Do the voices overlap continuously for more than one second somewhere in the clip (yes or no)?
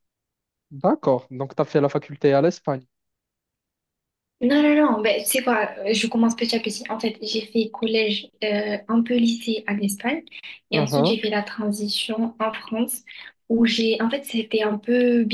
no